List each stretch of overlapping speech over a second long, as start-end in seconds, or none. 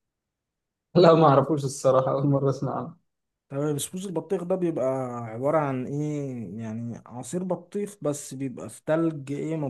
none